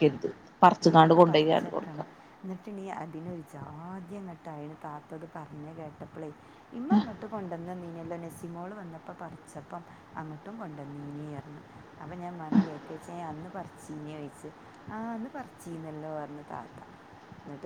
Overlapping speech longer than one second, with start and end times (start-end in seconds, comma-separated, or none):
0.8-2.1